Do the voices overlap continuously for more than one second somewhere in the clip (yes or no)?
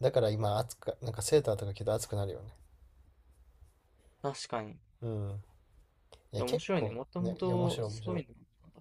yes